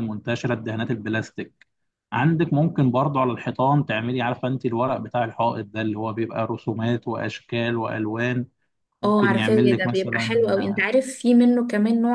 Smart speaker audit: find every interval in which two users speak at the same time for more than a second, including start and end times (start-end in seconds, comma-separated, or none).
9.0-10.6